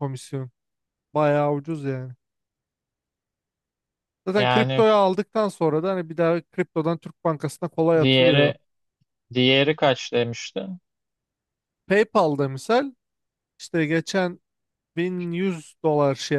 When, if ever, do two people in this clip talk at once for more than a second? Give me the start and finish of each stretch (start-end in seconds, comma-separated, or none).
none